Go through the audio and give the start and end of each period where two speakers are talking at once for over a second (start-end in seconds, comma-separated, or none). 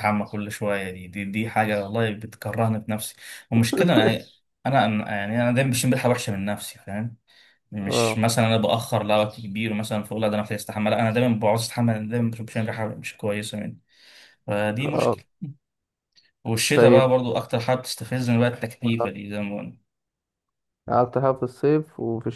none